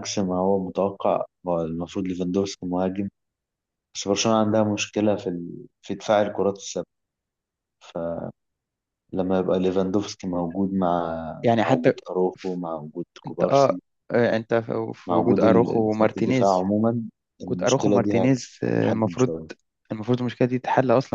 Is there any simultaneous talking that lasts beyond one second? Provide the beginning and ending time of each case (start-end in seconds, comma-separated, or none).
15.1-16.6, 17.4-19.3